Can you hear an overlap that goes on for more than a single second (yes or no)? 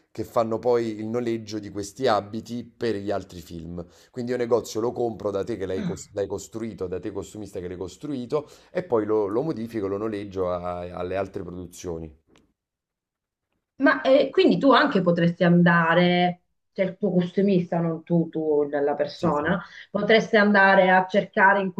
no